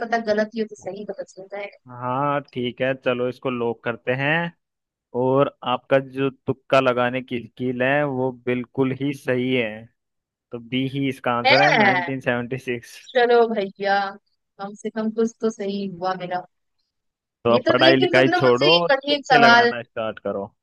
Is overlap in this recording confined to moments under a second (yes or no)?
no